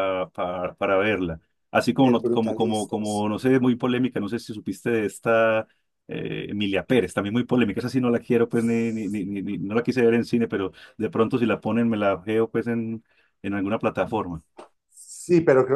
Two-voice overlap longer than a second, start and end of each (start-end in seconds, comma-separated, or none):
2.0-3.5